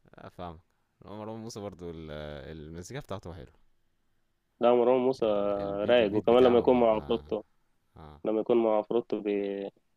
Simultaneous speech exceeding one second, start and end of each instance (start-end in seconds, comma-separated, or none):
5.9-7.2